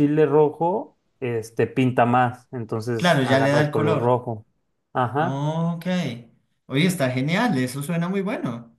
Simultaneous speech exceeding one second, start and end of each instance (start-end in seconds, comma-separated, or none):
3.0-4.2